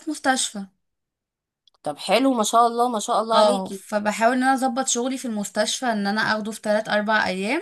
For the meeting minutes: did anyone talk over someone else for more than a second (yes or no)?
no